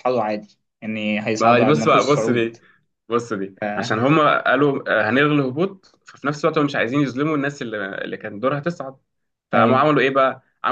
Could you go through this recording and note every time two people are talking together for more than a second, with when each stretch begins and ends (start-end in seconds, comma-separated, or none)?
1.4-2.6